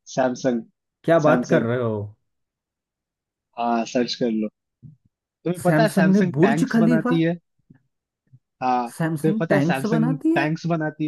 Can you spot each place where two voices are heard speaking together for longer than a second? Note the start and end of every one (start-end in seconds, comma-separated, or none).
5.6-7.2, 9.0-10.5